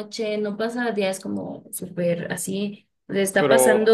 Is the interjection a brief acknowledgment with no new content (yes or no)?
yes